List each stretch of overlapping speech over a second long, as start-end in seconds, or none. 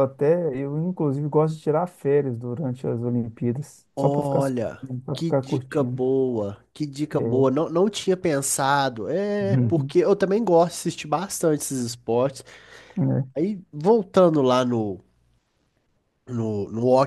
4.0-6.0